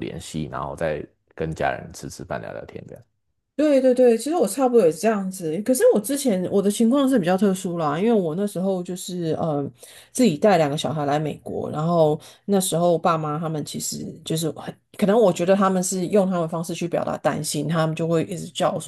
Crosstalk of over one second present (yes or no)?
no